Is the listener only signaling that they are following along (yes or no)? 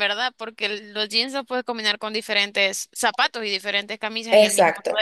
no